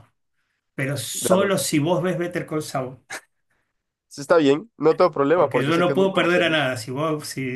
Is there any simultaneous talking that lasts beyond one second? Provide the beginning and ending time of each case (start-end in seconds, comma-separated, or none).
5.3-6.6